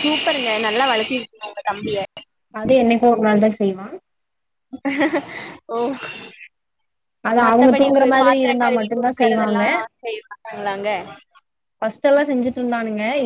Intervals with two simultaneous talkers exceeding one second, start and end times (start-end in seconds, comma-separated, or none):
7.4-9.6